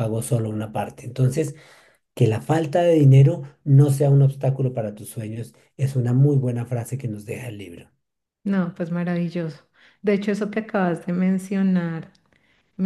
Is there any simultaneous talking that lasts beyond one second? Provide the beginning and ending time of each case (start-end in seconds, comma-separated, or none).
none